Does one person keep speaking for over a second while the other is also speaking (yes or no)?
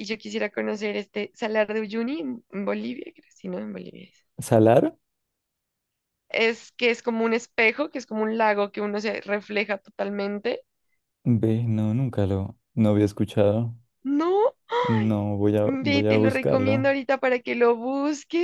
yes